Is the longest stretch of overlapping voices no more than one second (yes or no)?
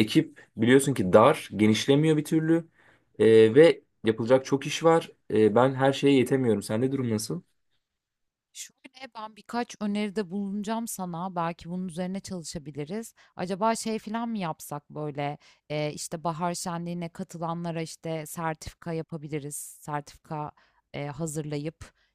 yes